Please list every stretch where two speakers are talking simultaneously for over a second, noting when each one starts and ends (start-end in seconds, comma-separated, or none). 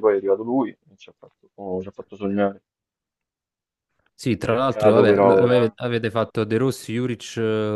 4.5-5.8